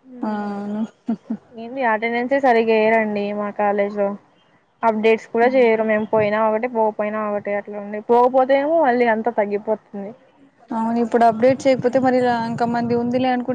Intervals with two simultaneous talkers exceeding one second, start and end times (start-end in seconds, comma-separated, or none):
none